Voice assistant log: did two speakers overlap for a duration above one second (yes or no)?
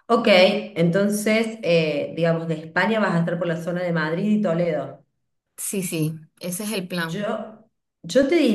no